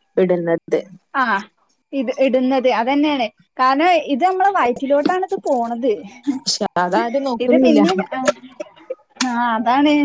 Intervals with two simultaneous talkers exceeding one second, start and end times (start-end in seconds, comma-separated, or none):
none